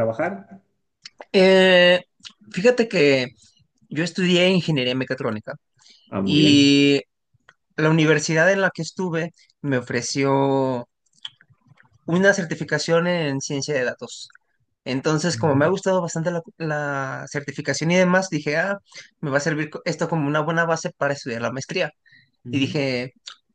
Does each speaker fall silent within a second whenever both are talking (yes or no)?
yes